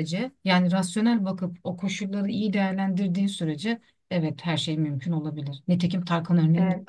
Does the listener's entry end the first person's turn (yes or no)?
no